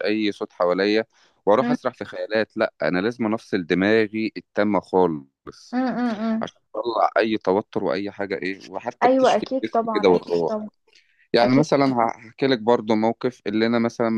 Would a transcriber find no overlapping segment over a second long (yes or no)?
no